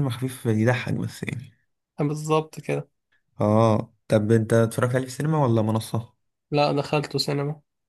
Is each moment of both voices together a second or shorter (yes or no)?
yes